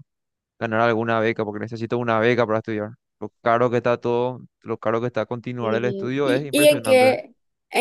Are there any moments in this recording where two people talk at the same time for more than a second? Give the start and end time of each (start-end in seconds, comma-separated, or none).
5.6-7.1